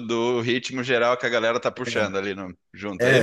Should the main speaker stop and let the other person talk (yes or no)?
yes